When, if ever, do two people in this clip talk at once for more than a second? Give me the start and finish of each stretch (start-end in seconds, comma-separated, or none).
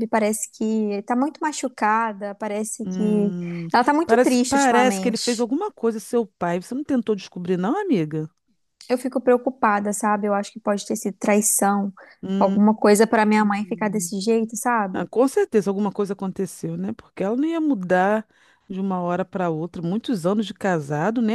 4.1-5.5